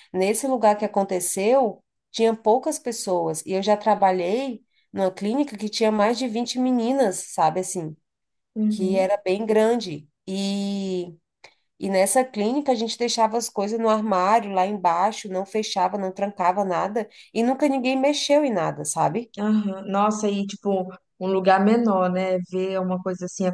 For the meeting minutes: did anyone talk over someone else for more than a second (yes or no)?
no